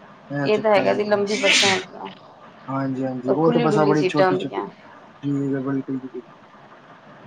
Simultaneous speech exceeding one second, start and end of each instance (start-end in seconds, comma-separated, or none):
3.3-4.7